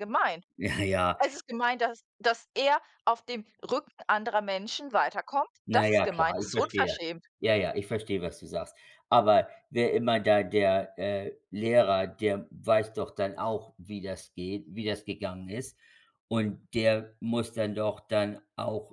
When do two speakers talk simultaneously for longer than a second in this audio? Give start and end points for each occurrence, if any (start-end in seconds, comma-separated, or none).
5.7-7.0